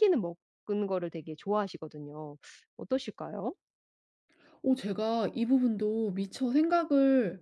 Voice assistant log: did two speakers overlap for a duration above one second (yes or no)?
no